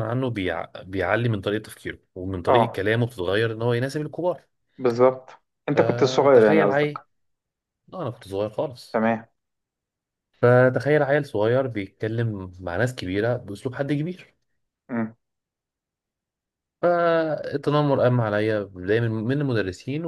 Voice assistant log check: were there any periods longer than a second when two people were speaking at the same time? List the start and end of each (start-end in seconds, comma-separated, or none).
5.7-7.0